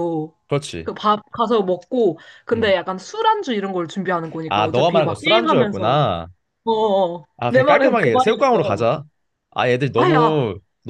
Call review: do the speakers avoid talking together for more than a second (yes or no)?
no